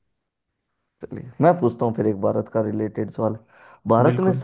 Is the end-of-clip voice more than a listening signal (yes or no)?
no